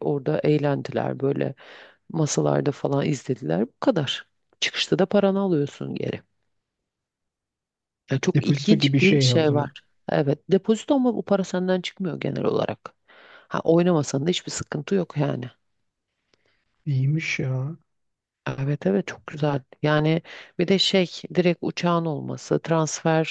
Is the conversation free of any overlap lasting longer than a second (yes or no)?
no